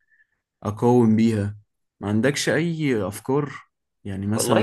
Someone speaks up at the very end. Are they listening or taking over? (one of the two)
taking over